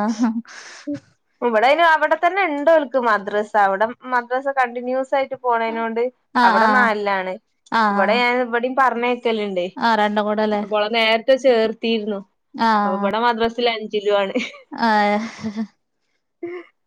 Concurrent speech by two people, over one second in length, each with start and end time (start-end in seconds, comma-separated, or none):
none